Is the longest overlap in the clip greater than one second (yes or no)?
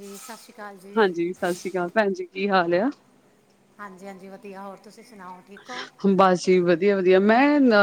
no